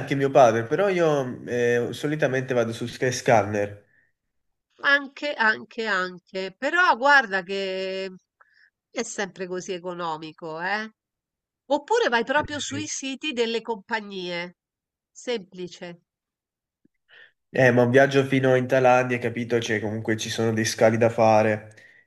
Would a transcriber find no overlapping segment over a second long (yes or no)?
yes